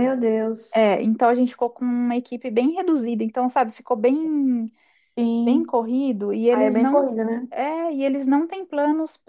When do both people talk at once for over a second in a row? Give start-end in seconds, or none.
none